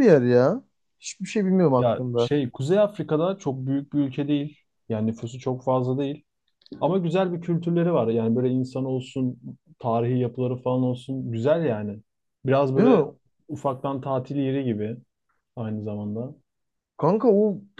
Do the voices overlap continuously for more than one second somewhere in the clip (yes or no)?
no